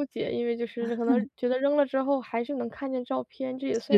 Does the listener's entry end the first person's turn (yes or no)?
yes